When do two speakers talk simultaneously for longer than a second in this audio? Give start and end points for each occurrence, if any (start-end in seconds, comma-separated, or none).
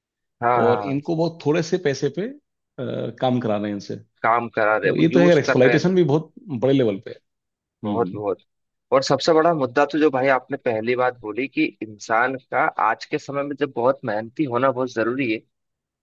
4.5-6.1